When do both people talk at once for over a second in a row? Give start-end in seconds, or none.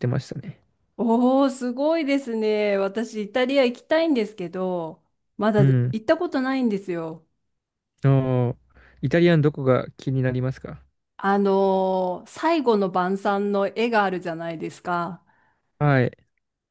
none